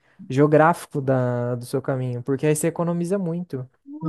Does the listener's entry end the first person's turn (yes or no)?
yes